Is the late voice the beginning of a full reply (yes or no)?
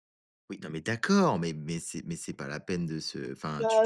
yes